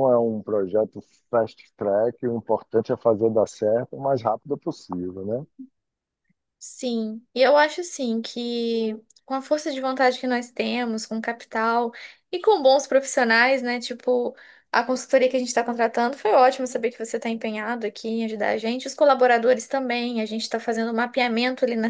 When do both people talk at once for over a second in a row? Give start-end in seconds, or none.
none